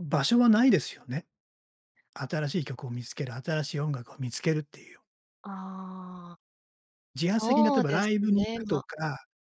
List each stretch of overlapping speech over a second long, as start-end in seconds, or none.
7.3-8.8